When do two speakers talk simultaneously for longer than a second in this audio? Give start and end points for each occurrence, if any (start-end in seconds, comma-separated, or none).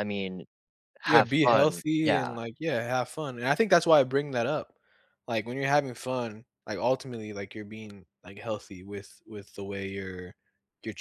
1.0-2.4